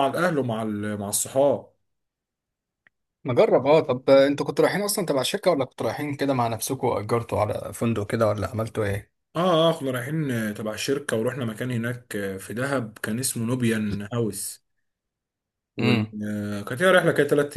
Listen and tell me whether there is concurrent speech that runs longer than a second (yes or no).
no